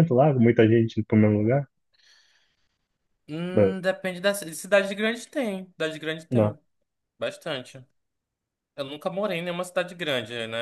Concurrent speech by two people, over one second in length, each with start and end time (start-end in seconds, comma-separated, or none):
none